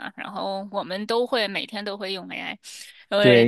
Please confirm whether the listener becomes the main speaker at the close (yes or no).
yes